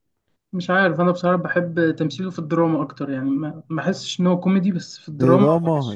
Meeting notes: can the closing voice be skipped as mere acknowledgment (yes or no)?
no